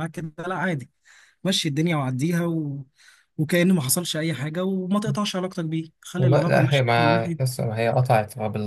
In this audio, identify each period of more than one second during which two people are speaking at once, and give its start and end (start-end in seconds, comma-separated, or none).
6.2-7.5